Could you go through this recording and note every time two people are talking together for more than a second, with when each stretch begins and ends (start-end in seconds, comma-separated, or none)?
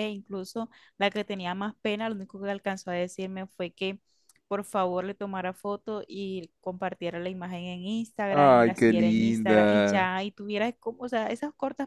8.4-10.1